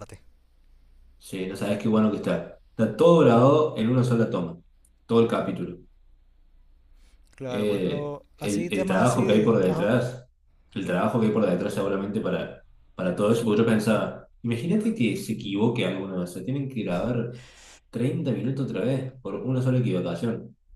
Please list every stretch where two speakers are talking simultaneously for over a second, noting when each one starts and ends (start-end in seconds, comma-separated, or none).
7.5-9.9